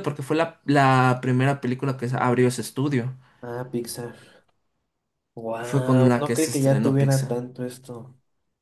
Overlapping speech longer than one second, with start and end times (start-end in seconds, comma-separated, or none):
5.6-7.4